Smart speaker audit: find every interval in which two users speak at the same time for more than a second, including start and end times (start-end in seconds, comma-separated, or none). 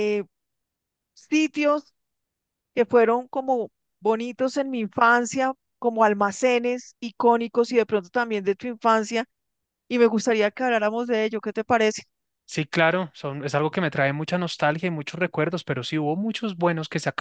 none